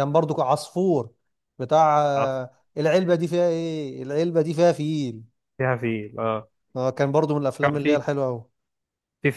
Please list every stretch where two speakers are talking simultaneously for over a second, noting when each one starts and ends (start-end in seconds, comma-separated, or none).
none